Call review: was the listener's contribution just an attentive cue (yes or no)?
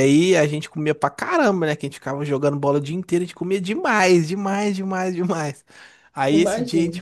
yes